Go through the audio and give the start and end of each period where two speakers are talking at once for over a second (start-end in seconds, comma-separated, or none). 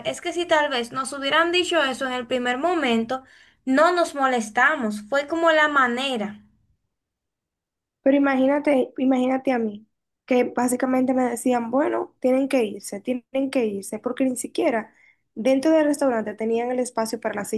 none